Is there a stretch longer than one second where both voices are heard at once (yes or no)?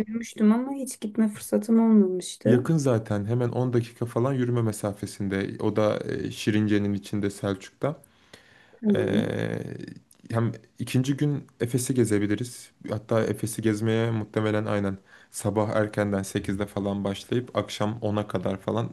no